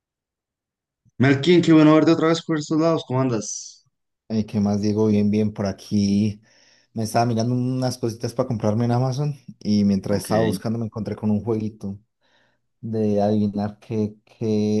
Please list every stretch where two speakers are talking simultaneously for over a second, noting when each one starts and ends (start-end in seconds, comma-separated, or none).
none